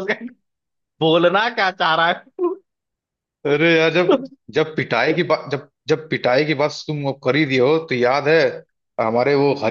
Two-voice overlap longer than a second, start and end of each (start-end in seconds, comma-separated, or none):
none